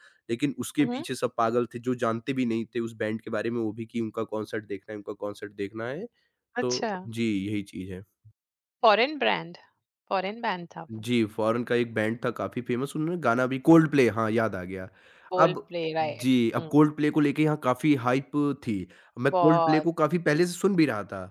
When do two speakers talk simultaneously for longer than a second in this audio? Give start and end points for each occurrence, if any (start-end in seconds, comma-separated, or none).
15.4-17.0